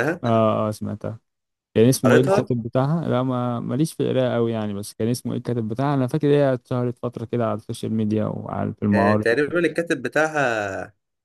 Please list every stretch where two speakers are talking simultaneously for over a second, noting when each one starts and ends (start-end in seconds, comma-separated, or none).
none